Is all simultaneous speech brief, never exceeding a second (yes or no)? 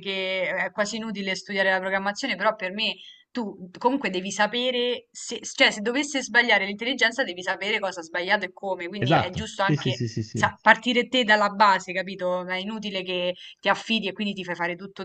no